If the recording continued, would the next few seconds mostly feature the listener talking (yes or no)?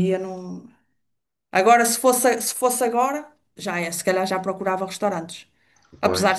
no